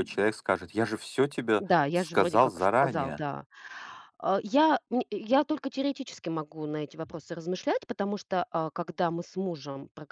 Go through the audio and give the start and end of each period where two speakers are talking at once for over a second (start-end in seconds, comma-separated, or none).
1.6-3.3